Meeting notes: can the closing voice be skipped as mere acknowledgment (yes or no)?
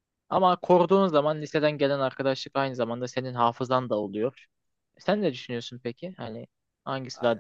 no